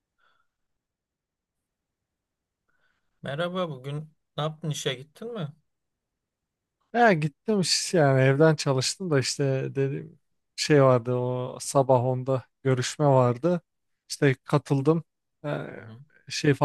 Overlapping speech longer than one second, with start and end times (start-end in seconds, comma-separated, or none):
none